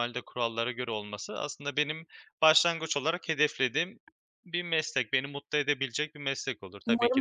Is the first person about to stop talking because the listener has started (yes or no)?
yes